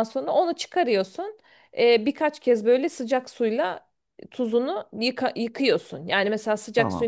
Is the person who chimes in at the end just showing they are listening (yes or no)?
yes